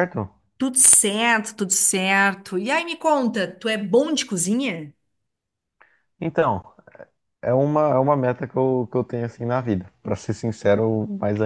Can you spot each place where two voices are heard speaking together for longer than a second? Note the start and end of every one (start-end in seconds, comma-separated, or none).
none